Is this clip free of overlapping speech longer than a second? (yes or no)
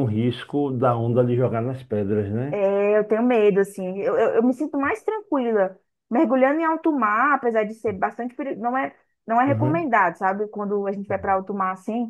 yes